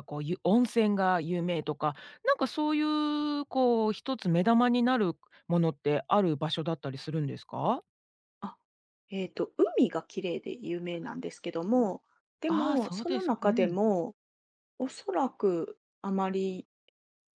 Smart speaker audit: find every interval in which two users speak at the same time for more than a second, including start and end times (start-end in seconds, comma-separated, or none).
12.5-13.8